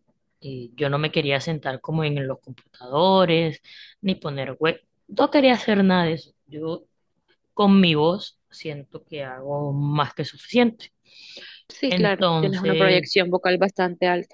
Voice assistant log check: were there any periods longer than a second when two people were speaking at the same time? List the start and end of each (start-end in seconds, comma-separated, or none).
11.9-13.1